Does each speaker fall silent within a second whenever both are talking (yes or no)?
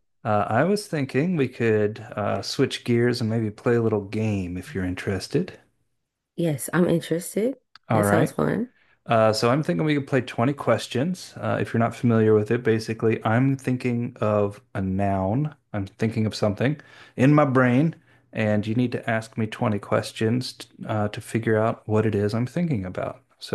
yes